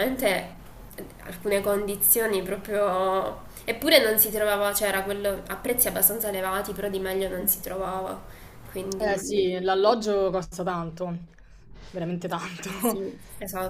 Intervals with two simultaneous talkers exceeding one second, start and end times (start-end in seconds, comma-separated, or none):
none